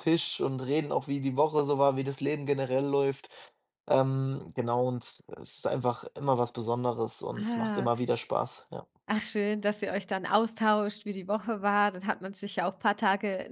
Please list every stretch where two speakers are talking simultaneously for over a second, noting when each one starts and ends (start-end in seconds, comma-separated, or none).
none